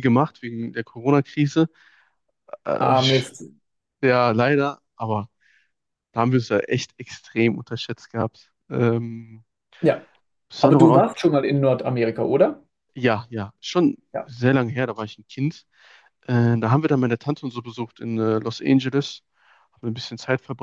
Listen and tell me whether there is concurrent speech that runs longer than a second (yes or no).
no